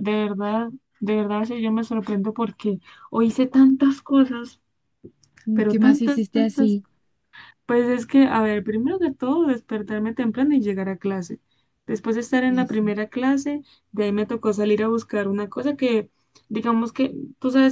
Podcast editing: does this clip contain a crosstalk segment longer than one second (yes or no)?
yes